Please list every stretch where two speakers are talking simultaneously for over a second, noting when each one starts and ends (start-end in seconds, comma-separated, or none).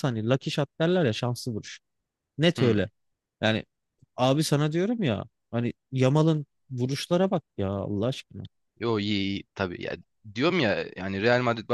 none